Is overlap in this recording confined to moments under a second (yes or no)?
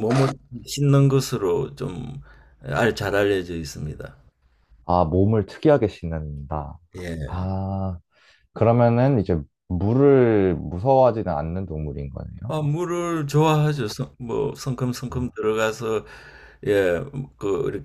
yes